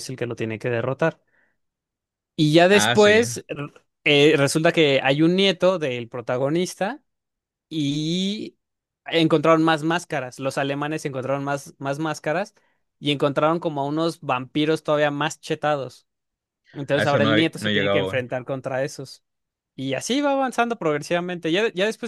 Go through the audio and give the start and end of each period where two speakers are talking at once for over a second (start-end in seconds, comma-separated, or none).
16.9-18.2